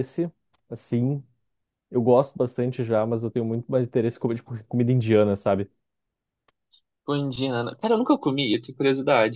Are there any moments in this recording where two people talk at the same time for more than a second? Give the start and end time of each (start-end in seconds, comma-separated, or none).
none